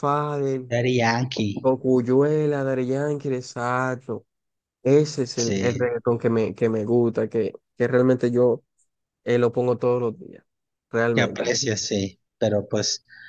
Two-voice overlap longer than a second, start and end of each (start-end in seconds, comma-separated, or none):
none